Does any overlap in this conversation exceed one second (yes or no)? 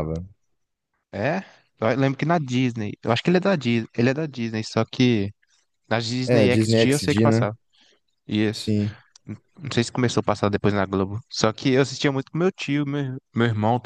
yes